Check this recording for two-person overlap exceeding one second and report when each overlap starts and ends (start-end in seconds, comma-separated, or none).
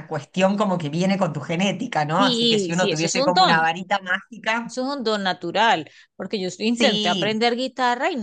2.2-3.7